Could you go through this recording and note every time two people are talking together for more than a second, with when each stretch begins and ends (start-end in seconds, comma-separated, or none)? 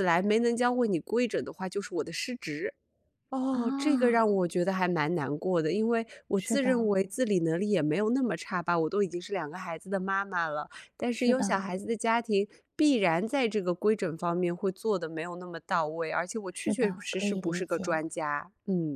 16.5-18.0